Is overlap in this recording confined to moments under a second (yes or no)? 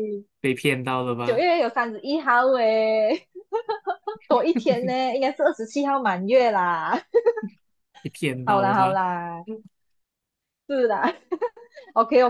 yes